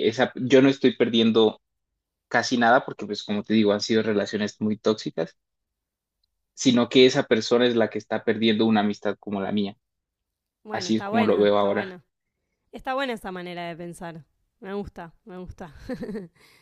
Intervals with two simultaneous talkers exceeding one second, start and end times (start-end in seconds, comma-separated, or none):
10.7-12.0